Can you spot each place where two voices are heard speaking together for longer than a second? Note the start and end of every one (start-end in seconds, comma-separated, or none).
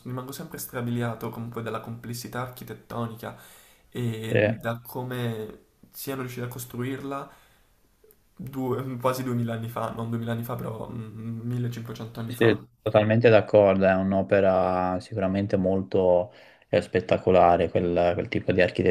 none